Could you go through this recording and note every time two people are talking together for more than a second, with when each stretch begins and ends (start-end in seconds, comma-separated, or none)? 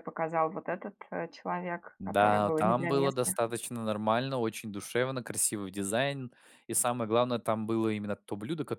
2.0-3.4